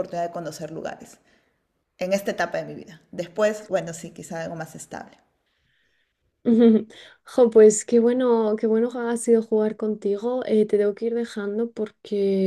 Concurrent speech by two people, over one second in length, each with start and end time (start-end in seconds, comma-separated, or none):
none